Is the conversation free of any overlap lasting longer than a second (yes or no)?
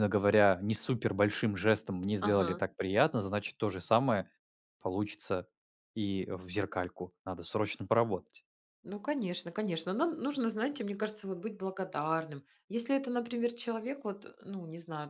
yes